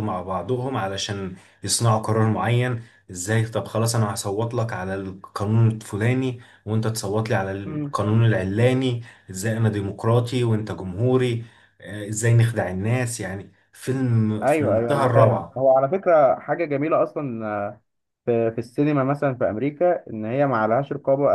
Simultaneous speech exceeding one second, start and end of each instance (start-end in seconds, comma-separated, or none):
14.4-15.6